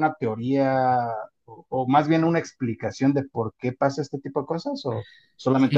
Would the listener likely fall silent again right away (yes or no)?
no